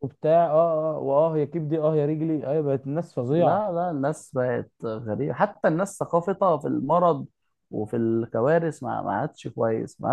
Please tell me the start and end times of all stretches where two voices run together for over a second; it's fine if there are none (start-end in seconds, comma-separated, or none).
none